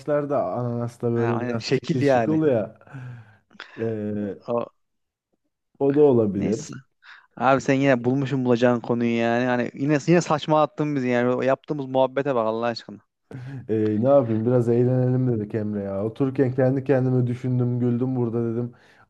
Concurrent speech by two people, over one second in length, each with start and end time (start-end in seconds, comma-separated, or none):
1.1-2.4